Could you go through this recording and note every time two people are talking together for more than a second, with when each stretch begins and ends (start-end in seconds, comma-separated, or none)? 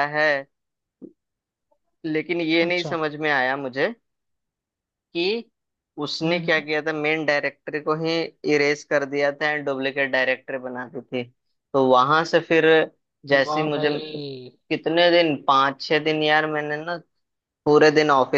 none